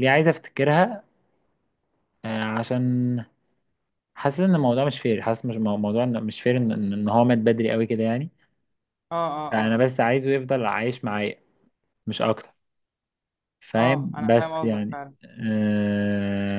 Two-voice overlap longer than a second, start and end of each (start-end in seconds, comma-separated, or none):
13.8-15.0